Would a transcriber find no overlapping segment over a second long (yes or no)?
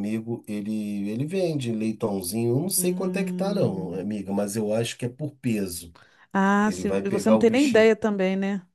no